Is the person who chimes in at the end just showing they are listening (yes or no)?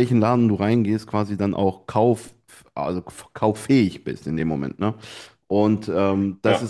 yes